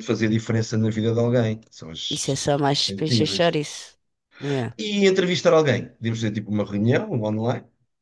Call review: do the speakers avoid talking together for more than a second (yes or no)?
no